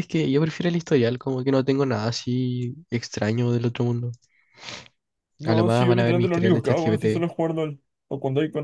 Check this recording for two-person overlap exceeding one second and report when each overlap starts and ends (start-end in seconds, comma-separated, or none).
5.4-7.3